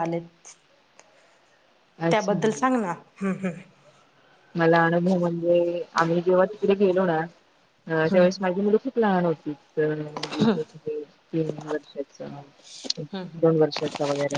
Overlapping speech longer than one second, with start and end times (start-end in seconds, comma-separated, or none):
none